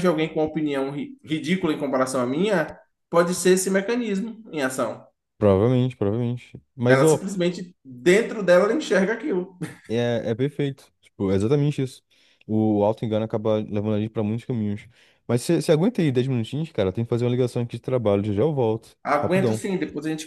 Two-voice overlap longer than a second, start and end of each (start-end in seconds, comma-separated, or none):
none